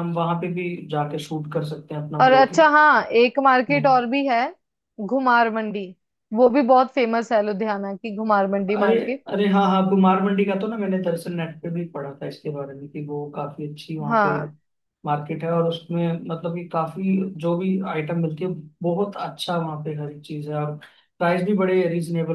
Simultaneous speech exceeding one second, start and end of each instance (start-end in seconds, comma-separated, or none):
none